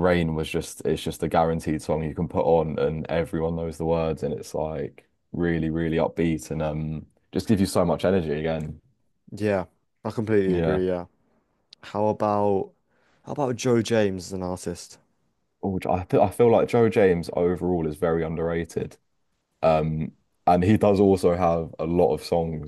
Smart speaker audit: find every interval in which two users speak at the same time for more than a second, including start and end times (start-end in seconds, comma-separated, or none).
none